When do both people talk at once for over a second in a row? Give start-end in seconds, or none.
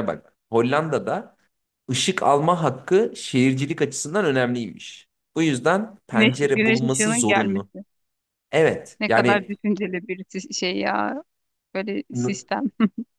6.1-7.7